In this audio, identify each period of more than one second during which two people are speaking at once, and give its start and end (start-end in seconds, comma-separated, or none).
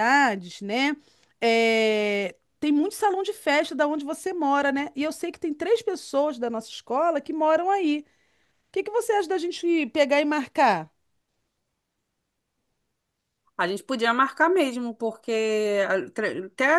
none